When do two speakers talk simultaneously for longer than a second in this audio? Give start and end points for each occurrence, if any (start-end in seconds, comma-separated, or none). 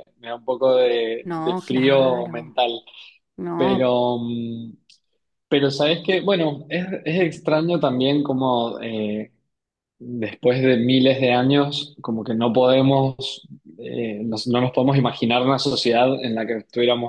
1.2-2.6